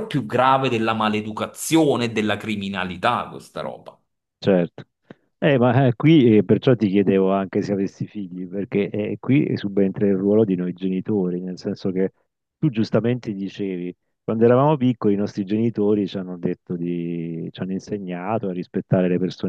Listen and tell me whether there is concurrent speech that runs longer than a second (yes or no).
no